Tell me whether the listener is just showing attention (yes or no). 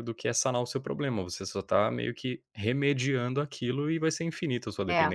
no